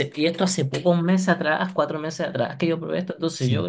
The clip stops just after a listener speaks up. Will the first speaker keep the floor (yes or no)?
no